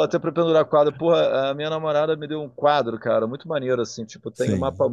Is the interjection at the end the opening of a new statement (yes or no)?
no